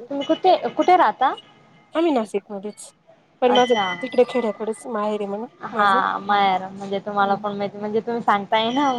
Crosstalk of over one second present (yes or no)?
no